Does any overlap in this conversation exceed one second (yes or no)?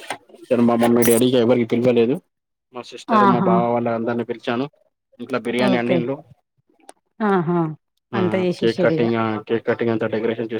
no